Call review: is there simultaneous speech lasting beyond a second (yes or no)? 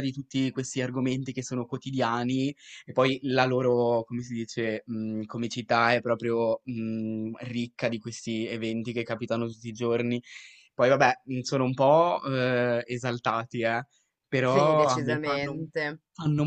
yes